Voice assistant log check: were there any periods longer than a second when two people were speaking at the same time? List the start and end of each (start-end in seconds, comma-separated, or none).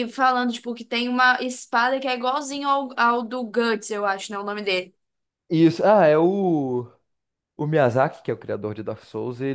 none